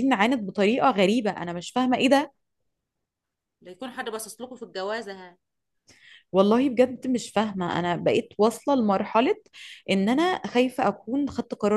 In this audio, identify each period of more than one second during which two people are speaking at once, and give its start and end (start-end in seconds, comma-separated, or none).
none